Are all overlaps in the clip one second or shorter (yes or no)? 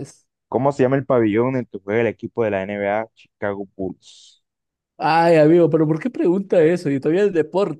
yes